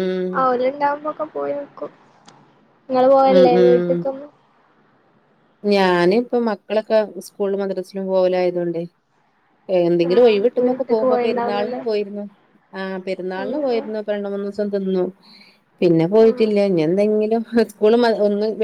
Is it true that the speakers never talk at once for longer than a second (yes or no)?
no